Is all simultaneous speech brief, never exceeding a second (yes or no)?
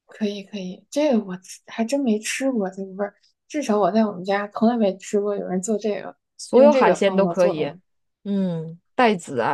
no